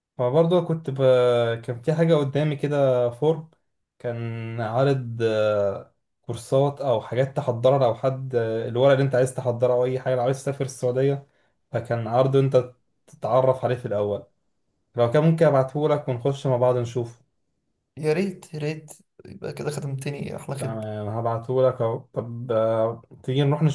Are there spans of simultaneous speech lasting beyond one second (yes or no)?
no